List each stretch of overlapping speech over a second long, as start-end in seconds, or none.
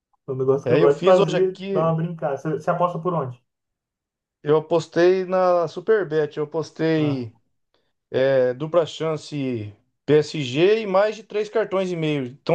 0.7-2.0